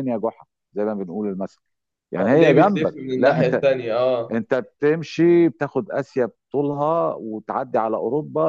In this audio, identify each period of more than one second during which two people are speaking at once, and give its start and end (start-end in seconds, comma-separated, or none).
2.2-3.6